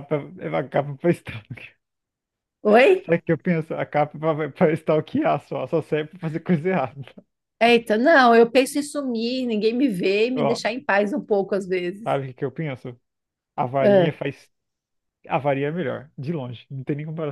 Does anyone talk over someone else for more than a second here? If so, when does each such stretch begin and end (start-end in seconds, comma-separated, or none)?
none